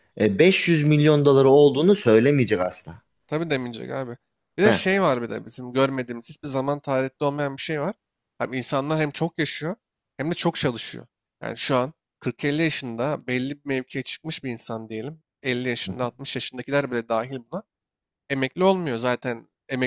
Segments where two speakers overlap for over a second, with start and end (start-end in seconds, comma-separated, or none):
none